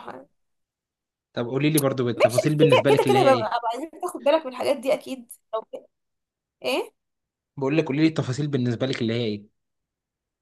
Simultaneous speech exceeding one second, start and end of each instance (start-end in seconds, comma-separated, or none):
2.1-3.6